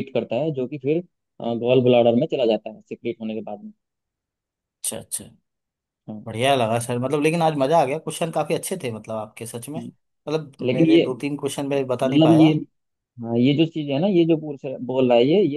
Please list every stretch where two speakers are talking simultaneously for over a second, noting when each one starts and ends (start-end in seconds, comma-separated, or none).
none